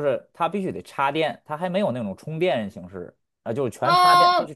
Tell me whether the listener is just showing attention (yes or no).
no